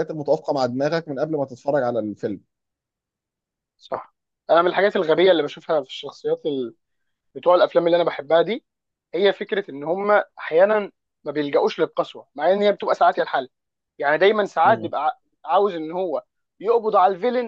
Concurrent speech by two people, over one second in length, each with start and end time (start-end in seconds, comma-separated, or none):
none